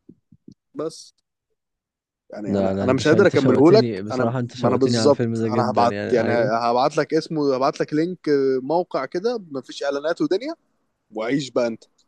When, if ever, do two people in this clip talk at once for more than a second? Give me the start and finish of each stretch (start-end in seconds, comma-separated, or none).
2.4-6.5